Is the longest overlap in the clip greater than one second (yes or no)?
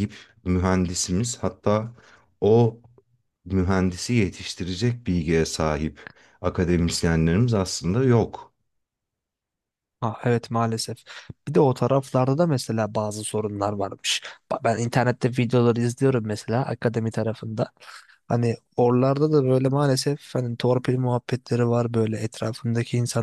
no